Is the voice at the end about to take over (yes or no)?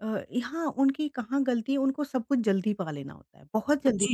yes